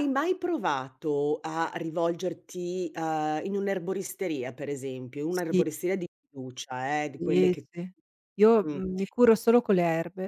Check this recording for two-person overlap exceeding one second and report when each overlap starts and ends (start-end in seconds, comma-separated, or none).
none